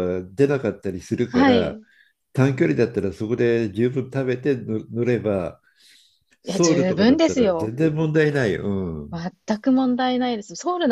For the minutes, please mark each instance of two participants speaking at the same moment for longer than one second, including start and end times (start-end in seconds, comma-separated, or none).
6.4-7.7